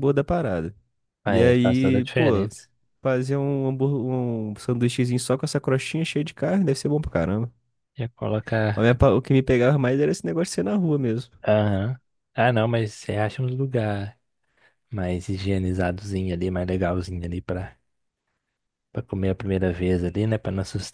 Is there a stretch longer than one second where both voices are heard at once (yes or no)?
yes